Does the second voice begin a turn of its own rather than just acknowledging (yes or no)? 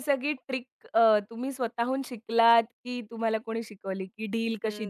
no